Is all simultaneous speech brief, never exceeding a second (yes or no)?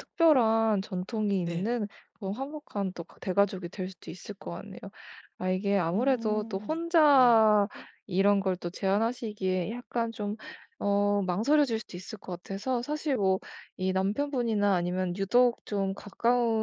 no